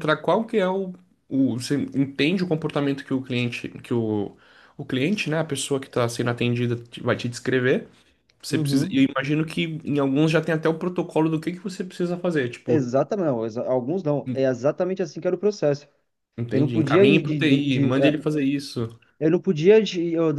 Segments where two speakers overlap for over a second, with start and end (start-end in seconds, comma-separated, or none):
16.5-18.1